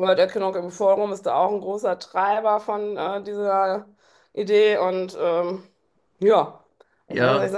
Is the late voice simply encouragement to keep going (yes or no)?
yes